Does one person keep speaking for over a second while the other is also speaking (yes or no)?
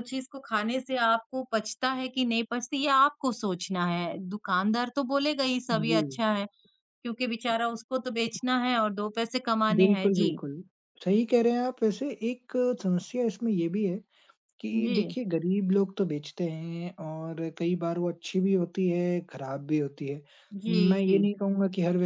no